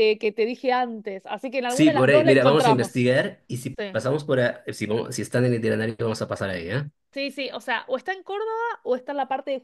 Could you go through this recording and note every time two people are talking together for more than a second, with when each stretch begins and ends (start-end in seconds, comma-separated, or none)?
1.7-3.0